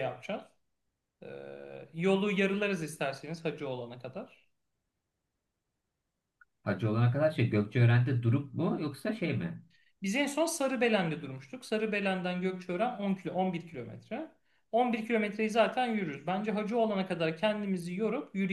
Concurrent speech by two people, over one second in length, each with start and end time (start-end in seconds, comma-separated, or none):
none